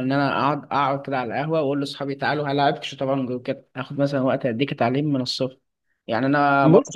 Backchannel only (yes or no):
yes